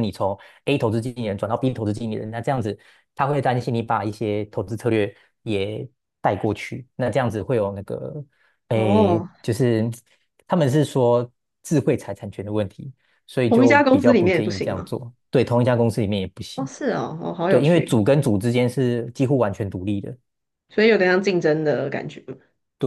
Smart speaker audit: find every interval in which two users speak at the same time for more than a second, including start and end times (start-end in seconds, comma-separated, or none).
13.5-14.9